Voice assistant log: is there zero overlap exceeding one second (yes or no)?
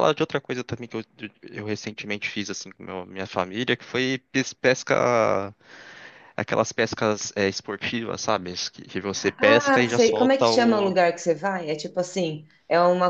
no